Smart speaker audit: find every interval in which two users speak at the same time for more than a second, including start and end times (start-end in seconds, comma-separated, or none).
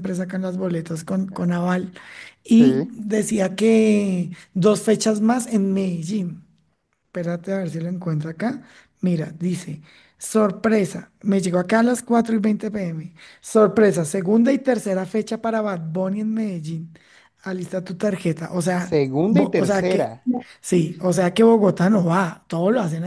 18.8-20.2